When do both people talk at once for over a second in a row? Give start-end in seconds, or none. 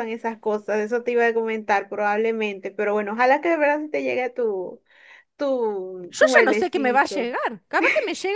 6.1-7.3